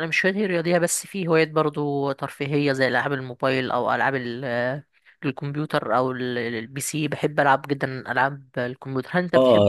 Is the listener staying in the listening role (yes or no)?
no